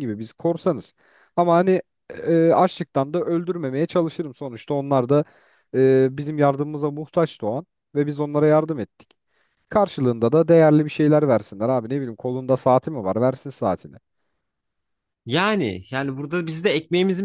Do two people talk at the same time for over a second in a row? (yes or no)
no